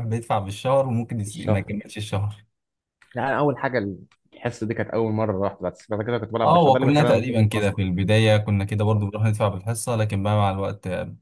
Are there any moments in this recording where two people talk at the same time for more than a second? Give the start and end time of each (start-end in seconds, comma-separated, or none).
6.4-7.8